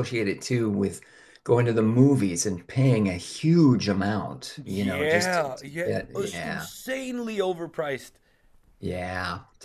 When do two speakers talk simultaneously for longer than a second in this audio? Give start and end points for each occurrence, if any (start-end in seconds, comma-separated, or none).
4.6-6.7